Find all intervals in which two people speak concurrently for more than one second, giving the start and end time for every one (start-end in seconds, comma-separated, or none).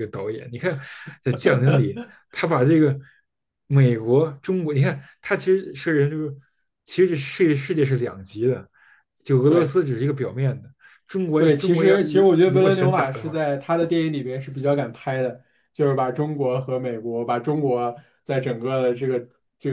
11.4-13.4